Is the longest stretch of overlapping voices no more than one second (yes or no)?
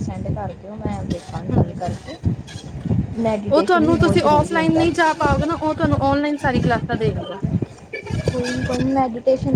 no